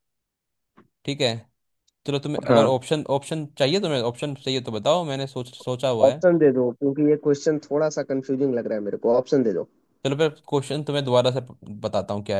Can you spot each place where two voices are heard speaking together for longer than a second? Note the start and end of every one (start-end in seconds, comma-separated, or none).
none